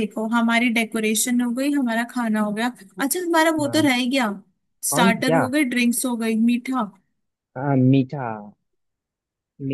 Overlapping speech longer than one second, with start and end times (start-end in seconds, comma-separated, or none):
none